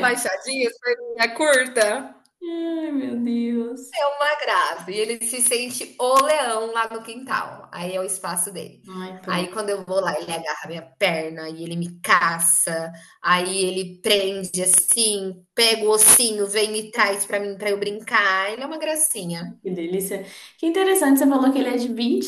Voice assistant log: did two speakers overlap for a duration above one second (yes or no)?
no